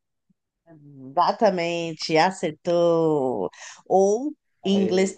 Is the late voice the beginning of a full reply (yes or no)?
no